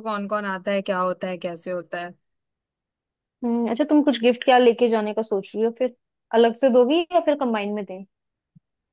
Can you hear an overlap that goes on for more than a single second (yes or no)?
no